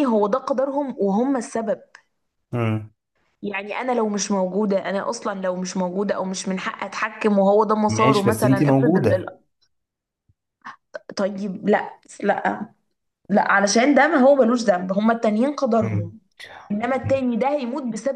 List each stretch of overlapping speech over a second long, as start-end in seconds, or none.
7.9-9.3